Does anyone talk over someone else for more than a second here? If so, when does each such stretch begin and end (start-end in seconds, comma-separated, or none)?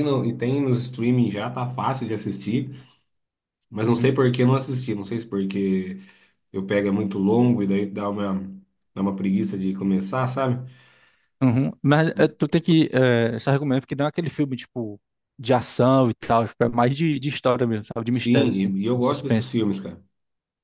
18.1-19.6